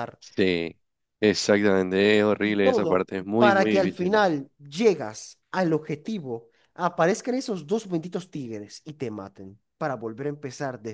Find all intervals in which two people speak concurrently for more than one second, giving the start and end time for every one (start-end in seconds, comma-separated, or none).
2.6-4.2